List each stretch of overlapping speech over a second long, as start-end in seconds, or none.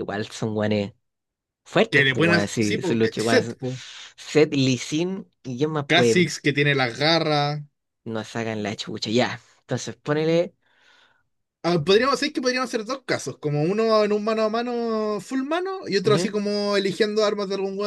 1.9-3.6